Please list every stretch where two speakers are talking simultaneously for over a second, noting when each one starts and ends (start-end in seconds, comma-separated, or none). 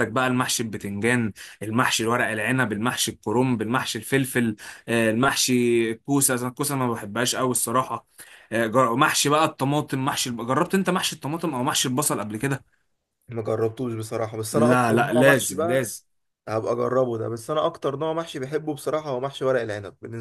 14.5-15.8